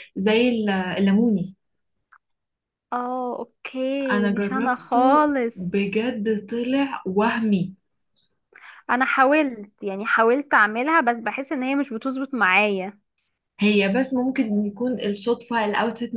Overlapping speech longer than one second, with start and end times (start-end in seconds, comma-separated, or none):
4.1-5.5